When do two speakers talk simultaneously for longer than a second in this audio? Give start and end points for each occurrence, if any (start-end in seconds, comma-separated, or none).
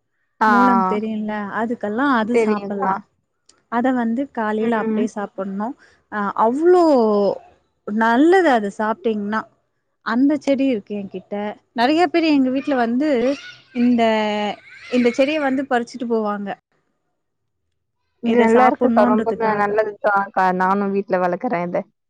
18.3-19.7